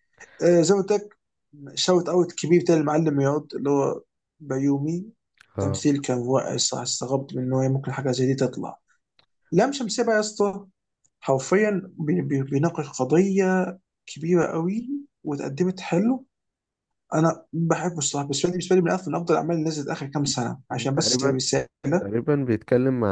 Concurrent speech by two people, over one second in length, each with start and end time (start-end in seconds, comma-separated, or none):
none